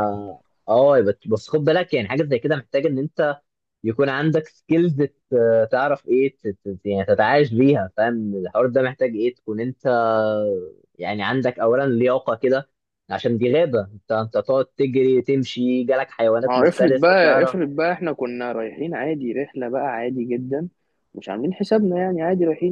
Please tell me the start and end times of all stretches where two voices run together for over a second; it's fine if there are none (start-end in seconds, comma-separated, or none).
16.4-17.6